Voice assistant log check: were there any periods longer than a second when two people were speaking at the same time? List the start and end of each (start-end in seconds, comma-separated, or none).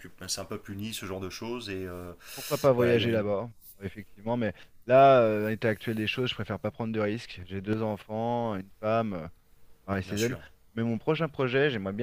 none